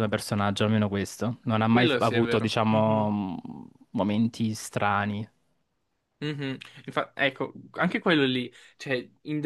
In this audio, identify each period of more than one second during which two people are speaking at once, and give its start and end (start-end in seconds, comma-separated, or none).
1.7-3.2